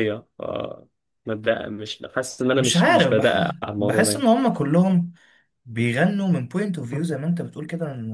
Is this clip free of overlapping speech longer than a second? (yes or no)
no